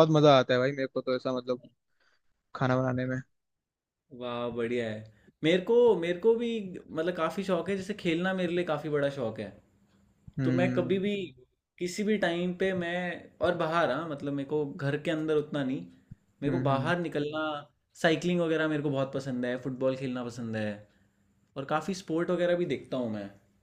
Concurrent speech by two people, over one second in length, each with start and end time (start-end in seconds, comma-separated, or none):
none